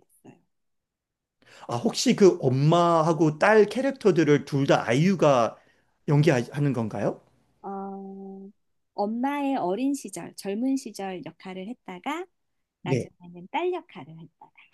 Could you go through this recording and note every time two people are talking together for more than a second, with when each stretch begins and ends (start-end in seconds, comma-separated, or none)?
none